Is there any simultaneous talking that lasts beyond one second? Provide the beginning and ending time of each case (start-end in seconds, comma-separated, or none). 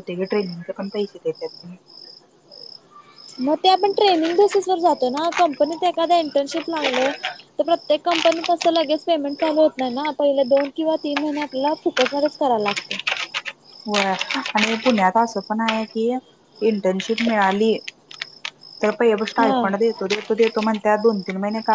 none